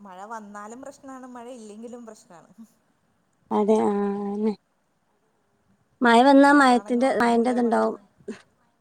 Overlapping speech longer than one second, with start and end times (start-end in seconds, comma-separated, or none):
6.3-8.0